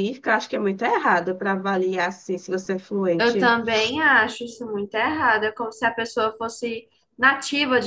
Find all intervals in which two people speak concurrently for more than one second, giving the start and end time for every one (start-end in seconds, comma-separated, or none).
none